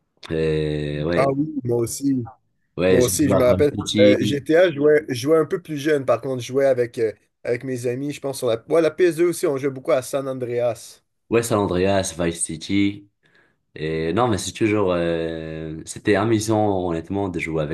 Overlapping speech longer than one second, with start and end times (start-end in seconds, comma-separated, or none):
2.9-4.4